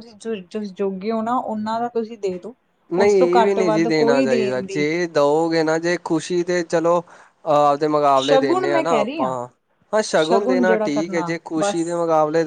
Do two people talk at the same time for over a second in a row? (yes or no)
yes